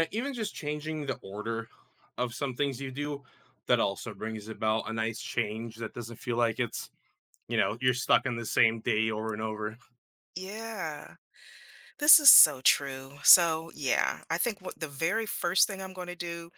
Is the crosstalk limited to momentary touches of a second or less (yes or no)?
yes